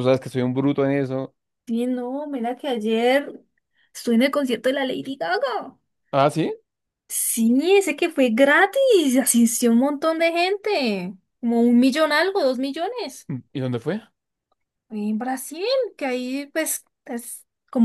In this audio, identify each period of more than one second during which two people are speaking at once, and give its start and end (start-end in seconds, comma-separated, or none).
none